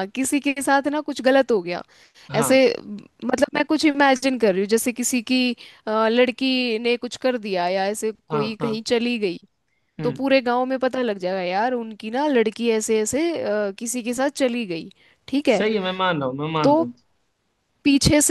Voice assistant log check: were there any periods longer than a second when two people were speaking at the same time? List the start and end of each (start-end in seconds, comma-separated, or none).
none